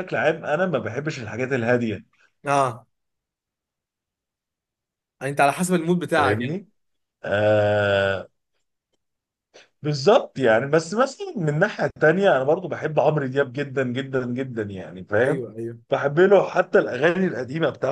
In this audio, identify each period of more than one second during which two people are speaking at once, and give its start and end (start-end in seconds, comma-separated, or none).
none